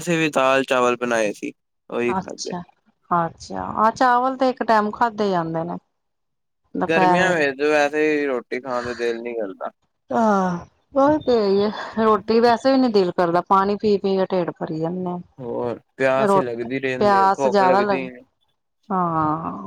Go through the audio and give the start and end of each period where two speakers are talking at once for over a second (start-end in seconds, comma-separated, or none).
16.2-18.0